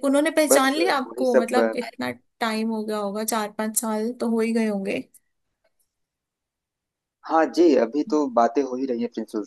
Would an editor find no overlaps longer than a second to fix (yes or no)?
no